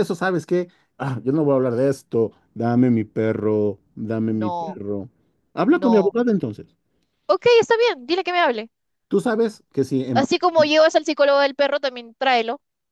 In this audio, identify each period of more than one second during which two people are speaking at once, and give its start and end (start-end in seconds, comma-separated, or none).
none